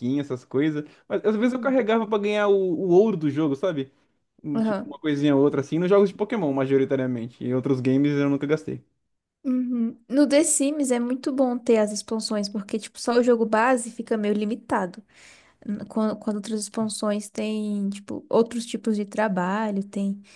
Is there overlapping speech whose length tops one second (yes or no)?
no